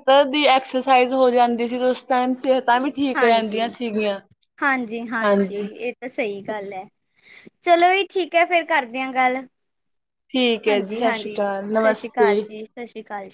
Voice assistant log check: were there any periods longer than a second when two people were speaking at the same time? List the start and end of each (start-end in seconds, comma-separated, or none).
10.7-12.4